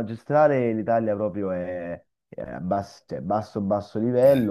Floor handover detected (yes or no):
no